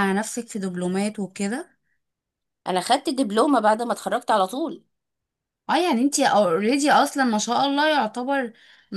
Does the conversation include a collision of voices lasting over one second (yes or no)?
no